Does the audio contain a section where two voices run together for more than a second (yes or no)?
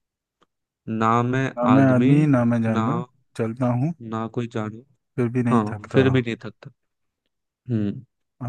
no